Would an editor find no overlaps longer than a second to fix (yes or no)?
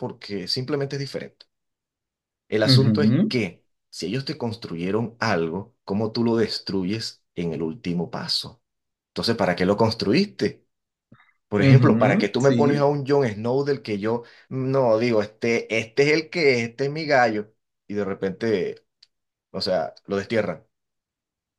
no